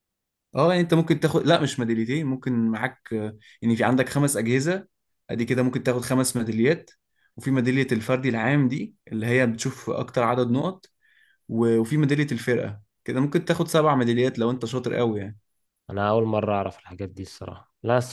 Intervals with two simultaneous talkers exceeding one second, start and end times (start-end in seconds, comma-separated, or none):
none